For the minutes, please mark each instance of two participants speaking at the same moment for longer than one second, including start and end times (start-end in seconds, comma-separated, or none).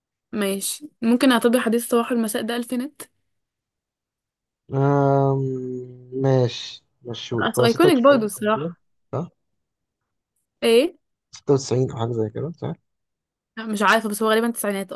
7.4-8.7